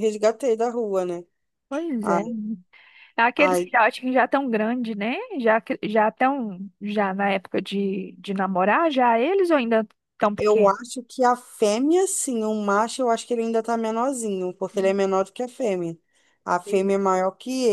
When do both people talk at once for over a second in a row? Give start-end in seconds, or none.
none